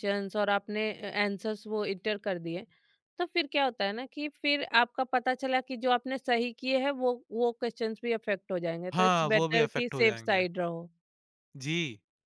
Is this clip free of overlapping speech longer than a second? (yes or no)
no